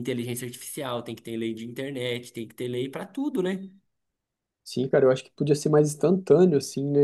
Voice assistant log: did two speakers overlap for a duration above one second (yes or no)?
no